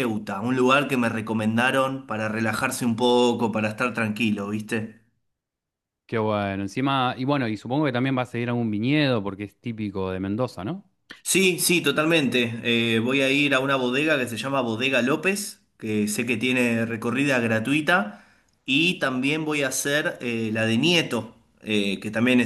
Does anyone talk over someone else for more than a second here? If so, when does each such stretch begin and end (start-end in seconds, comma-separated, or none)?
none